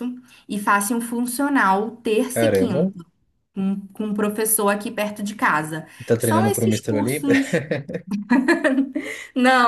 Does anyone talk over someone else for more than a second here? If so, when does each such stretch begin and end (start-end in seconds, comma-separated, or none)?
6.0-7.3